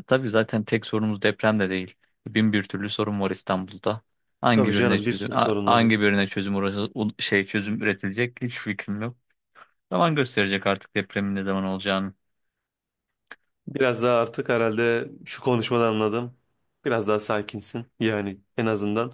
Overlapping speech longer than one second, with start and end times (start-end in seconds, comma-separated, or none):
4.5-5.9